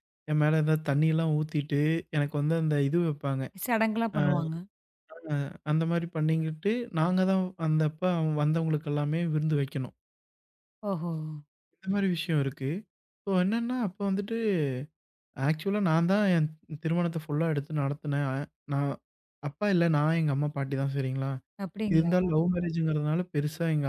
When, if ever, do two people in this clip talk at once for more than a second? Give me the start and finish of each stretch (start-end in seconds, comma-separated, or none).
none